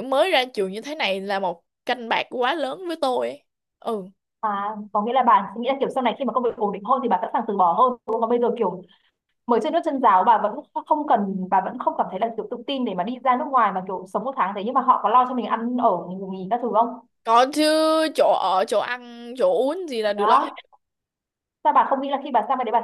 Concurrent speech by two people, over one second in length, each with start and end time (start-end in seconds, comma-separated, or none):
none